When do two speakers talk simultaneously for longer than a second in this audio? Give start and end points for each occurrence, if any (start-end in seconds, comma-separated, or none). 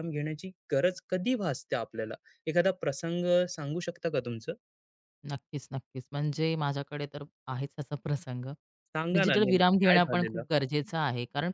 9.1-10.4